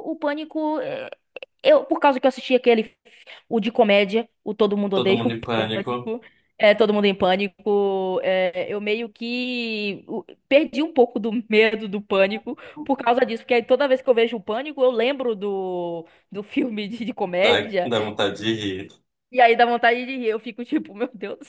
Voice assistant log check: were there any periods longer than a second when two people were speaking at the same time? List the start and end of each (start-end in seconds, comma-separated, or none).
4.9-6.2